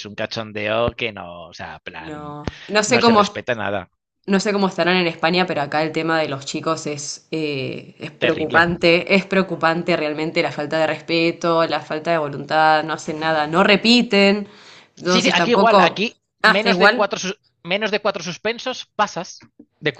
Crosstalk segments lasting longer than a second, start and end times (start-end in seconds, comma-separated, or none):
15.0-17.1